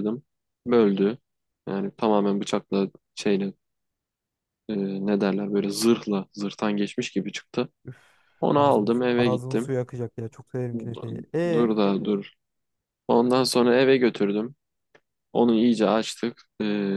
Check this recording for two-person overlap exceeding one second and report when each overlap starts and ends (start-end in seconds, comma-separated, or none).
8.4-9.7